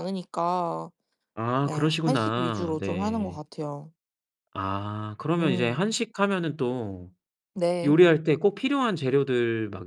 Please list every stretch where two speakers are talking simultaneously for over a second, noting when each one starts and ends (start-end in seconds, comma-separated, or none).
1.6-3.4